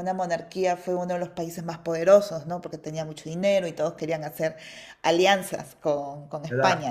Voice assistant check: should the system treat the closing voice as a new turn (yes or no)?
yes